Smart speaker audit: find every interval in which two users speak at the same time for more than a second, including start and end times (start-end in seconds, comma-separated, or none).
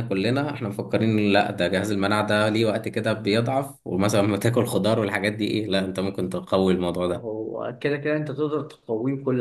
none